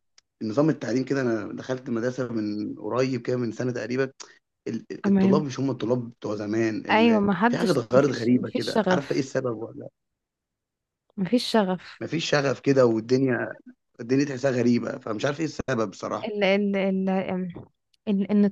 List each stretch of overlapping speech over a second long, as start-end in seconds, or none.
6.9-9.3